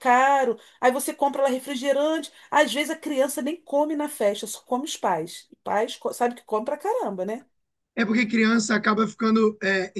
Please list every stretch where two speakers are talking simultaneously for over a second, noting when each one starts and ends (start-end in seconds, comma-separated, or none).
none